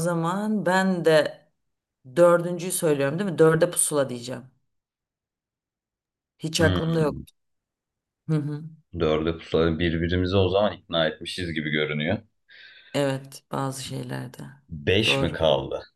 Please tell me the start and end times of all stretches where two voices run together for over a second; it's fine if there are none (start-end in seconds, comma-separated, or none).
none